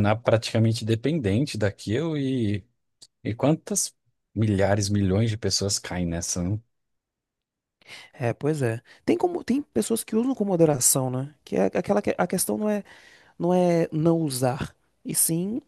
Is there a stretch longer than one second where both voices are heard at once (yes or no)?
no